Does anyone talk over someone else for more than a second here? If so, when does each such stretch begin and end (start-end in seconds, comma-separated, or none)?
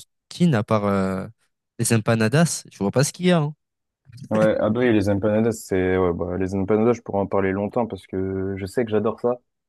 none